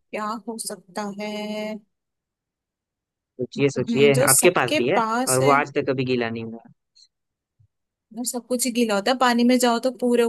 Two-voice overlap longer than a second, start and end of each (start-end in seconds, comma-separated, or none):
3.6-5.5